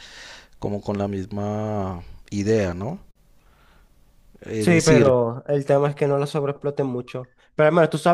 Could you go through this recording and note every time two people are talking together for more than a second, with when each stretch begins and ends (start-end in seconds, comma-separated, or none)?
none